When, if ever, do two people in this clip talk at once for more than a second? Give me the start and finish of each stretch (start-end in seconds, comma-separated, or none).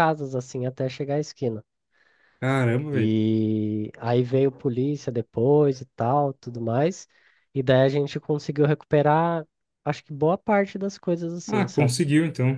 none